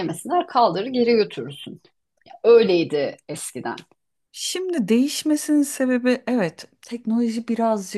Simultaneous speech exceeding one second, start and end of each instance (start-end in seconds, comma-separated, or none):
none